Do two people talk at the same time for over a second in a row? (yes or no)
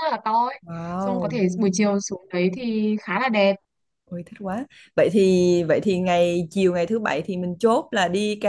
no